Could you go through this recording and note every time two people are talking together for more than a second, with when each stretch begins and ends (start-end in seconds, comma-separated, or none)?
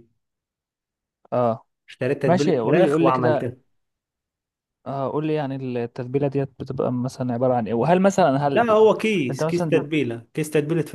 2.2-3.5